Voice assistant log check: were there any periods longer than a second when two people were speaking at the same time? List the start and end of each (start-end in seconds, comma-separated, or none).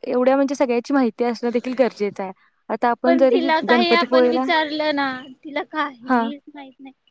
3.0-4.4